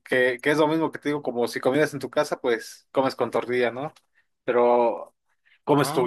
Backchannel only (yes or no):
yes